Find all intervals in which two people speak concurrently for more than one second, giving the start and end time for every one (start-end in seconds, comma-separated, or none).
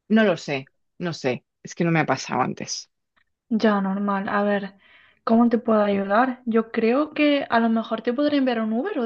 none